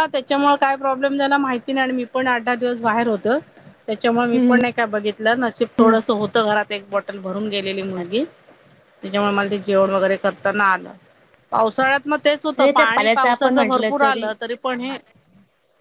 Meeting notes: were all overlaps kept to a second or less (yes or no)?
no